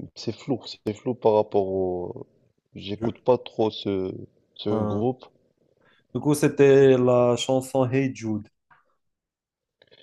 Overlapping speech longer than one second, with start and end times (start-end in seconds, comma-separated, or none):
none